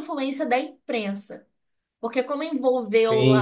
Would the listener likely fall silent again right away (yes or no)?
yes